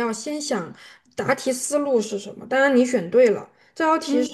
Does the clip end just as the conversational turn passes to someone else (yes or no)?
no